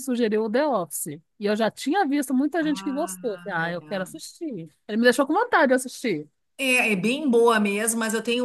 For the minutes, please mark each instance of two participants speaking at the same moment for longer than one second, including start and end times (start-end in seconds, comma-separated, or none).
2.6-4.2